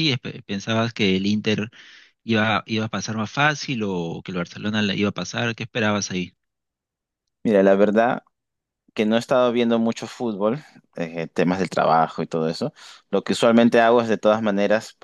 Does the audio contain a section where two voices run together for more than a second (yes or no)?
no